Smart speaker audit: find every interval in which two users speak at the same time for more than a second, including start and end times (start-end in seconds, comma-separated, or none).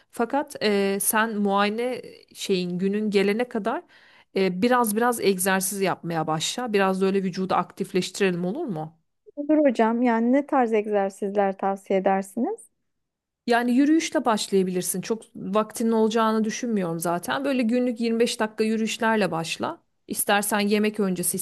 none